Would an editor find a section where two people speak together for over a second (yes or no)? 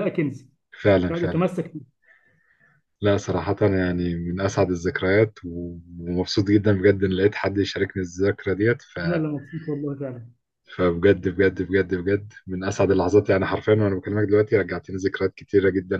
no